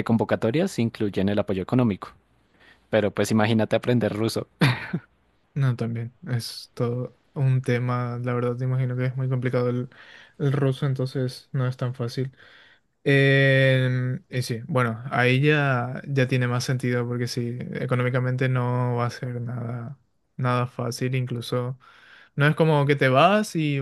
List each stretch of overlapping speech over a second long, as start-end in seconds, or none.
none